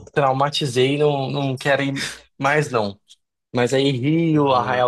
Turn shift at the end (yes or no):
no